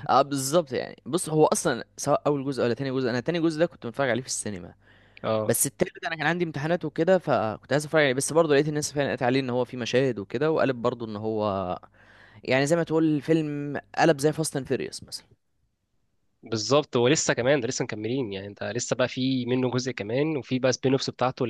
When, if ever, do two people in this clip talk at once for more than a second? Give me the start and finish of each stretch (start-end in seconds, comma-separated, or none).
none